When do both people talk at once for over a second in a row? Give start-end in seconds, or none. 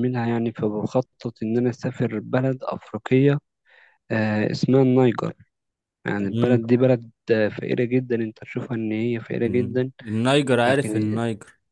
none